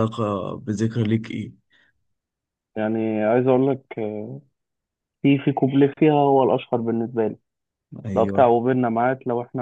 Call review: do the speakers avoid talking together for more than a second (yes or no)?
yes